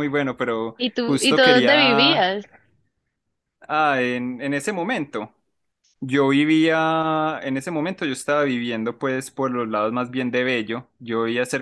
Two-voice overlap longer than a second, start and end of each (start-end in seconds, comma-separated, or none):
0.8-2.3